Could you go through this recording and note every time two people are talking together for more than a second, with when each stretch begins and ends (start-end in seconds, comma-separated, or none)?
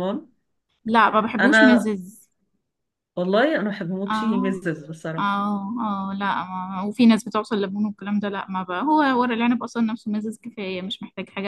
none